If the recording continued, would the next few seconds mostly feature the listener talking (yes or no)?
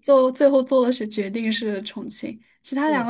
no